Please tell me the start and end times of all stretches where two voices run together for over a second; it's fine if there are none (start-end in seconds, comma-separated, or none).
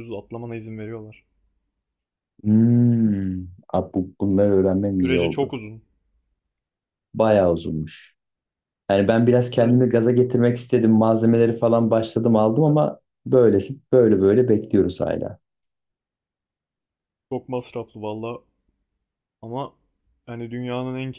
none